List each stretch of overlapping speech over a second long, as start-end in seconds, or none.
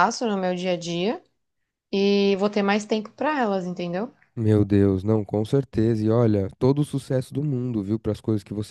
none